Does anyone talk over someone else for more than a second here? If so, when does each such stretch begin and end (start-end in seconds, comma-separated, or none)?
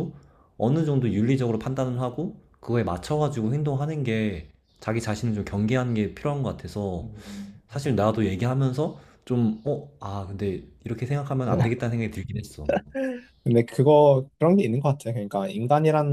none